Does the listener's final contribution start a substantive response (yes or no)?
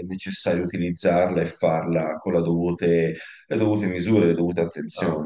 yes